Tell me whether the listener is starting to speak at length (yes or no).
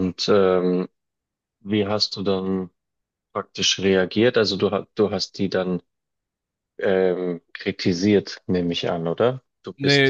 yes